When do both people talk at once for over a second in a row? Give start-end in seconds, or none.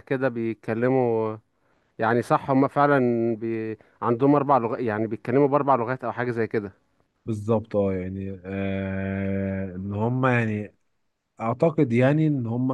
none